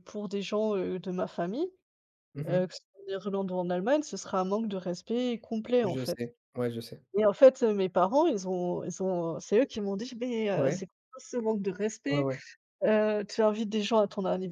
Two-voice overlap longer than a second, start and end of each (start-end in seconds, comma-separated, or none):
none